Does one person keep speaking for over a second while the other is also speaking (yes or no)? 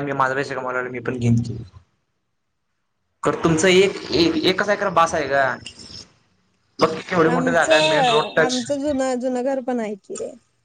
yes